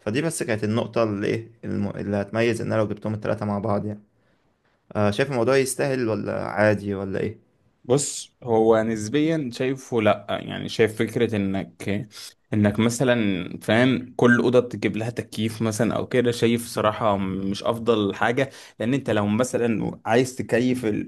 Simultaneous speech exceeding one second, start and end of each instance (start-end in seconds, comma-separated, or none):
none